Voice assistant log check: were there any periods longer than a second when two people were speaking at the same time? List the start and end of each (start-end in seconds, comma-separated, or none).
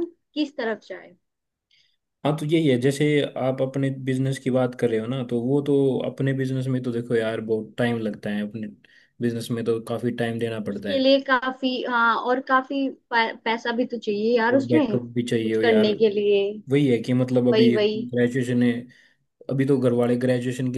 14.5-15.9